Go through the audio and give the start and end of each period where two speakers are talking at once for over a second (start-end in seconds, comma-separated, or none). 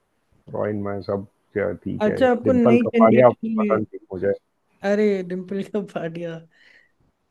2.1-3.8